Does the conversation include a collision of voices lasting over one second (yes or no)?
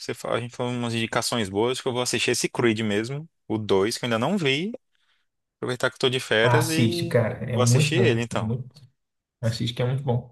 yes